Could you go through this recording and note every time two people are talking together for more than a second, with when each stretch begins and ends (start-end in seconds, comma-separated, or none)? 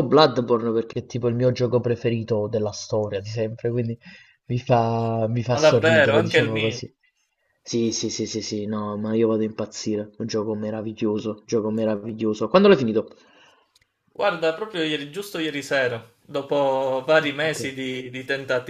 5.5-6.8